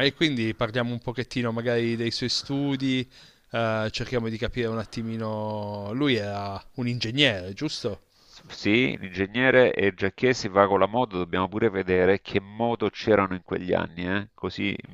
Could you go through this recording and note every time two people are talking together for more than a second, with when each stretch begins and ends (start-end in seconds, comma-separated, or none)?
none